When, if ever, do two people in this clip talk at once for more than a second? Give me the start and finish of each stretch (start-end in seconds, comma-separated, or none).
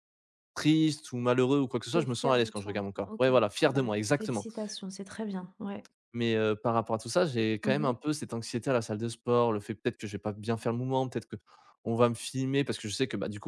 1.9-4.5